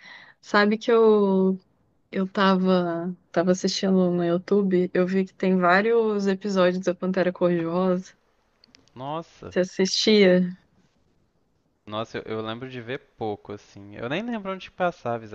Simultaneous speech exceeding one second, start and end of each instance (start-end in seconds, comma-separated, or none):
none